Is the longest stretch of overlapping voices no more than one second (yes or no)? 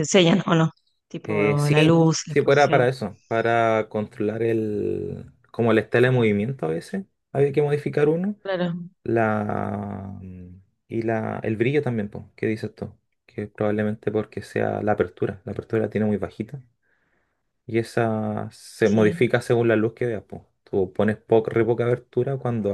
no